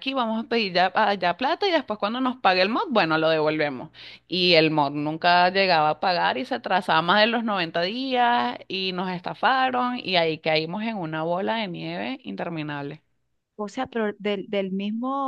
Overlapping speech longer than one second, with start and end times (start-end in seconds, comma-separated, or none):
none